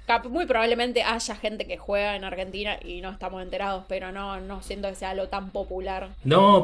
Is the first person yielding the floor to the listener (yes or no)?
yes